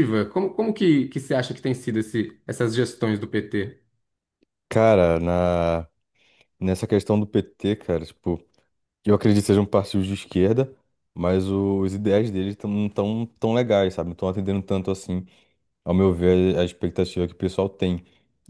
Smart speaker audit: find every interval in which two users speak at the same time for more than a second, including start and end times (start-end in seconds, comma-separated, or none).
none